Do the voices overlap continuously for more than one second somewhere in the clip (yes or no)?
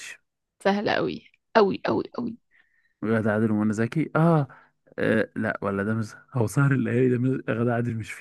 no